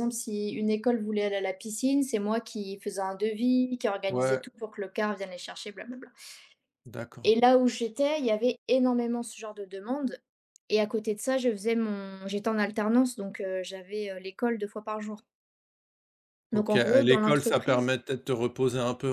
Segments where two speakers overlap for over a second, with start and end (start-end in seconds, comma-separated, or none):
16.5-17.9